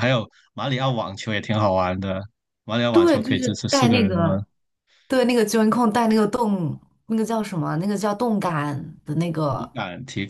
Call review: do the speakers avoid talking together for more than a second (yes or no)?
no